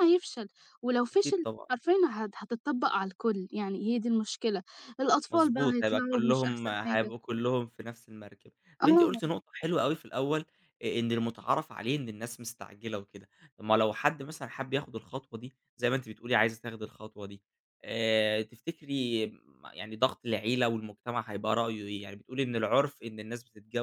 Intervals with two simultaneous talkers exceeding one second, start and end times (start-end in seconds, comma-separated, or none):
5.3-7.1